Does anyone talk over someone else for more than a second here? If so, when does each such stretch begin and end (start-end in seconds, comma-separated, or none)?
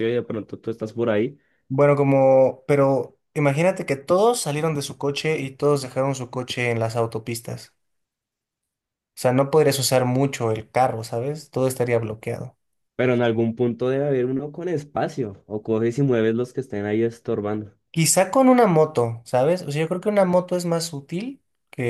none